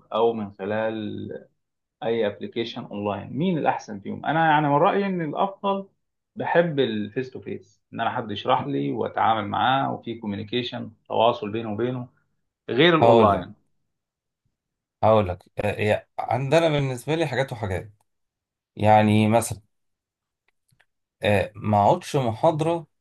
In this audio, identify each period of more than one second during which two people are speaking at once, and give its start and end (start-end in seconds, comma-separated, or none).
none